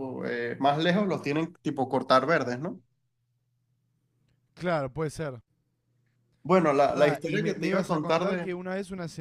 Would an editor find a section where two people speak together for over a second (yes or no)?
yes